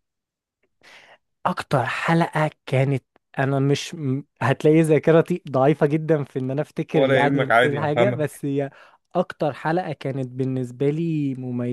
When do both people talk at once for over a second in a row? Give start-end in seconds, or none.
6.9-8.4